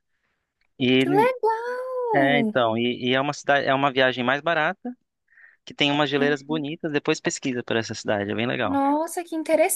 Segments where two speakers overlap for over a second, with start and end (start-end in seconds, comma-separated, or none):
none